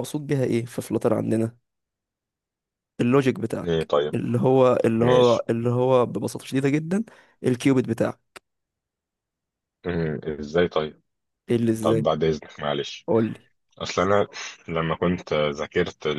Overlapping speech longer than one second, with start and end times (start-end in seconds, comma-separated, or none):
none